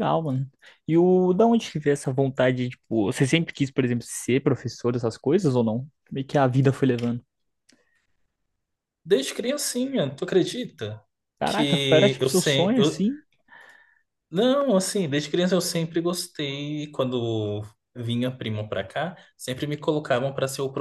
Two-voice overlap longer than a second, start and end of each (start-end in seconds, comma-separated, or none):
11.4-13.0